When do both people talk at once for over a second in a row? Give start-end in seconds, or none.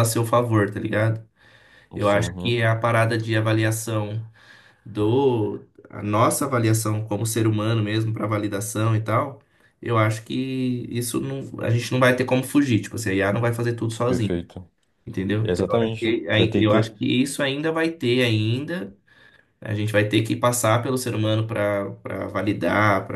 15.4-16.9